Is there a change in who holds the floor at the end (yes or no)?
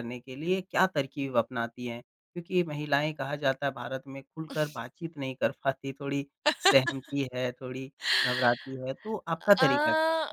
yes